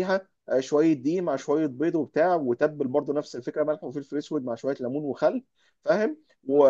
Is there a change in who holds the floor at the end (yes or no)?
no